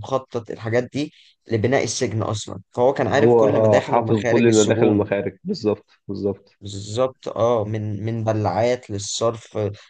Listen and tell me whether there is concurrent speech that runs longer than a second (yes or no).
yes